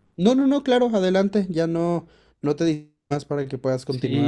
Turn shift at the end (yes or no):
yes